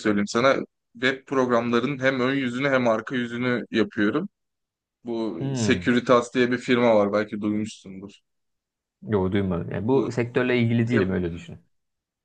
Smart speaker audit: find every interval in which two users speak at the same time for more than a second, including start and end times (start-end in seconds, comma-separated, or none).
none